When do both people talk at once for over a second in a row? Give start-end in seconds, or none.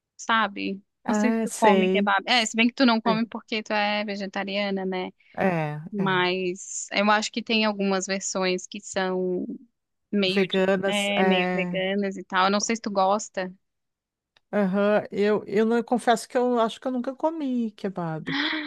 1.0-3.2, 10.2-11.8